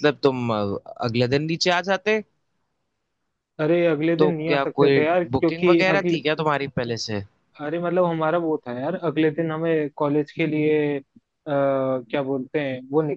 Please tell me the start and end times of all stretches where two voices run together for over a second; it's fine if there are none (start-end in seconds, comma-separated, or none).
4.2-6.2